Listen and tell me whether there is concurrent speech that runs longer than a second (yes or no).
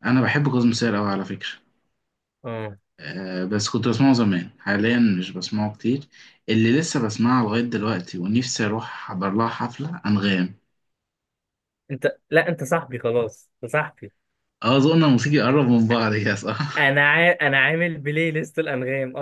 no